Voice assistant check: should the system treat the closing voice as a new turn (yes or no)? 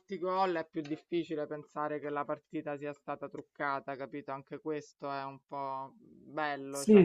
yes